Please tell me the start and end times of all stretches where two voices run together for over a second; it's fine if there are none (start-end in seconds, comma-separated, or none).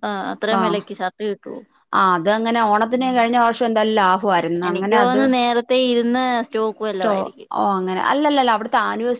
none